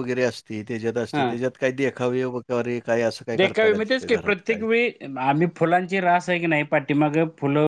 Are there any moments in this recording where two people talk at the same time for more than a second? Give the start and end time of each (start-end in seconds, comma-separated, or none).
3.4-4.7